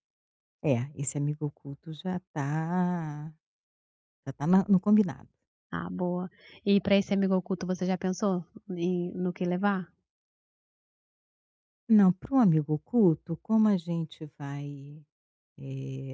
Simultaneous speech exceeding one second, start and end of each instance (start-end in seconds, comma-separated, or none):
none